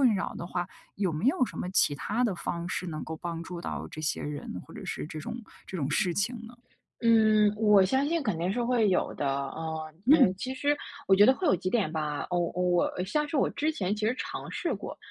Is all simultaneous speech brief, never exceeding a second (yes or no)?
yes